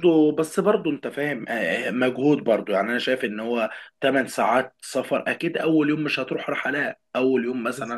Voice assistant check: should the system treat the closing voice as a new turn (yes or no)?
no